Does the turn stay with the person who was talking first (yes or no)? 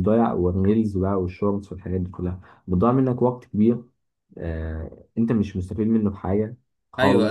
no